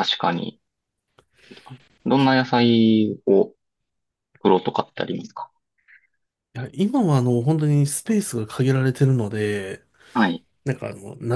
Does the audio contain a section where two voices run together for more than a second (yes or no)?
no